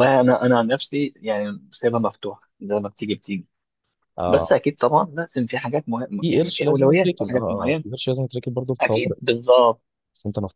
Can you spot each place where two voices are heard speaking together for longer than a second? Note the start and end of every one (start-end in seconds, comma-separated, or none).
6.2-7.8